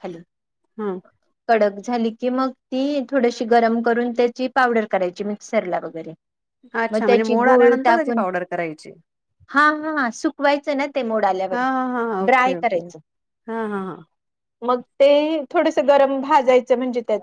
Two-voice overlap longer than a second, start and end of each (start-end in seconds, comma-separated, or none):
6.9-8.2